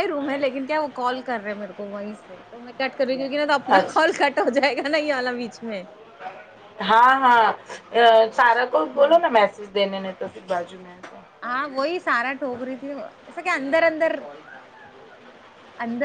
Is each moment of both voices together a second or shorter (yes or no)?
yes